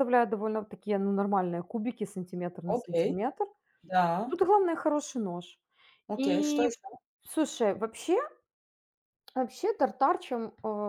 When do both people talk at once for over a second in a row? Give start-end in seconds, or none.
none